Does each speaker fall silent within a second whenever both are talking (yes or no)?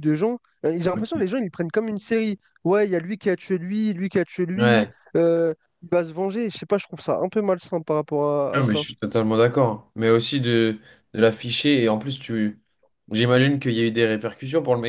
yes